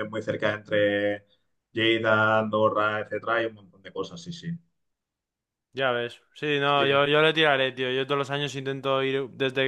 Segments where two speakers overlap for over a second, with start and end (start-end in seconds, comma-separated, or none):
none